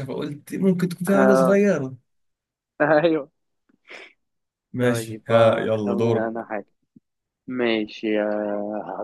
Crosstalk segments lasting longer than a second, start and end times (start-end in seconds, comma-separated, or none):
4.8-6.3